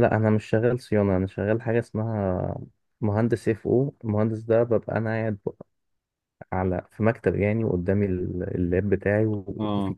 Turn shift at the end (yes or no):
no